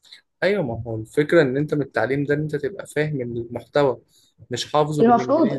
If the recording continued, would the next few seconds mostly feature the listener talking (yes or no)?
yes